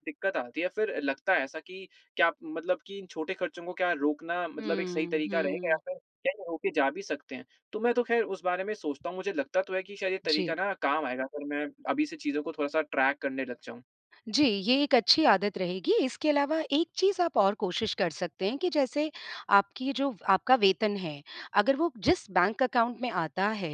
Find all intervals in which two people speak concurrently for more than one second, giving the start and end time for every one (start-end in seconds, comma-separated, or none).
4.6-5.8